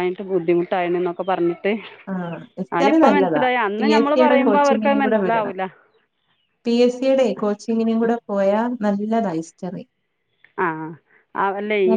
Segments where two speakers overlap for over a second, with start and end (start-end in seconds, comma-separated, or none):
3.8-5.5